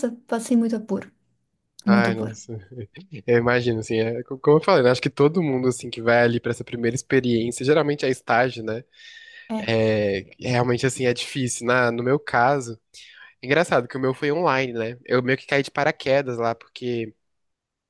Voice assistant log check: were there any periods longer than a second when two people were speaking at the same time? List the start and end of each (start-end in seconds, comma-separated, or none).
none